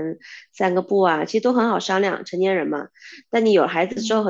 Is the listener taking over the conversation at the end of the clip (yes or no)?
no